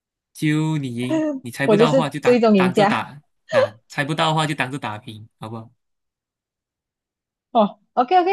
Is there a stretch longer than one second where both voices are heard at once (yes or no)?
yes